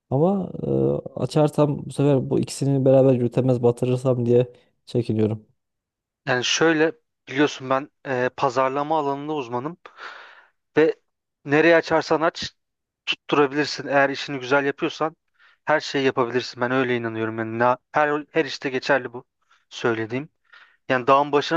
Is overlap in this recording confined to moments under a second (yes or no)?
yes